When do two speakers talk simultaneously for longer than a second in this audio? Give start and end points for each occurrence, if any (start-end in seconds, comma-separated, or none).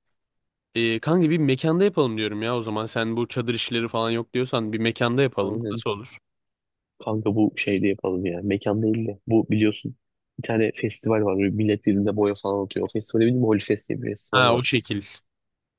none